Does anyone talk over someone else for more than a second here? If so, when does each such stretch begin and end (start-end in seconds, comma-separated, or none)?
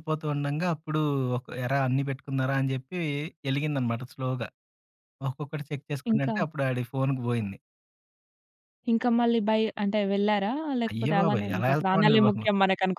10.9-12.4